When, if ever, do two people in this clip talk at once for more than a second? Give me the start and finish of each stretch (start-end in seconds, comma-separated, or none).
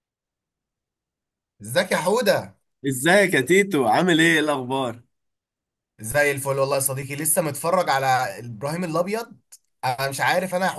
none